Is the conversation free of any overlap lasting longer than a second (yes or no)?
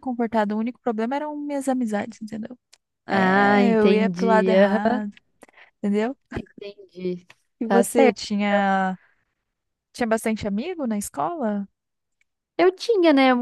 no